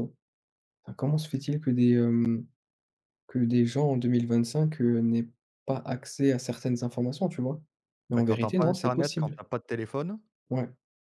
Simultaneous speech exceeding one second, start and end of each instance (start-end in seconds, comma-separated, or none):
8.2-9.4